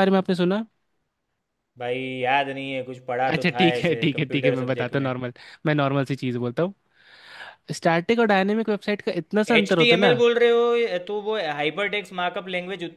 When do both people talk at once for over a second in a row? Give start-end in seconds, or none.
3.3-5.1